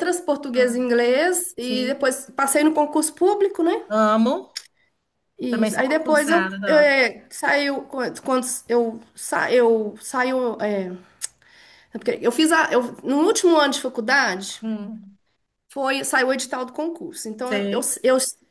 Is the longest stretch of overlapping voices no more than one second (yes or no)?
no